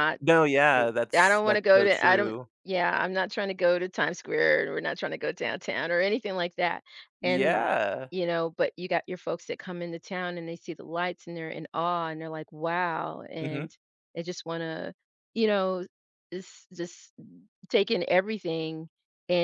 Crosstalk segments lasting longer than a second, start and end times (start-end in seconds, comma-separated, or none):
0.7-2.5